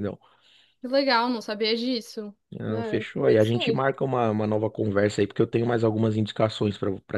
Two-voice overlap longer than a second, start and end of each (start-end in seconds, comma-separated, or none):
2.5-3.9